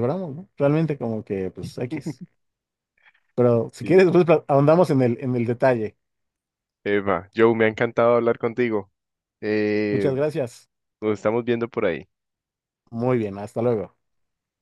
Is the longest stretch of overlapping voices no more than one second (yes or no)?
yes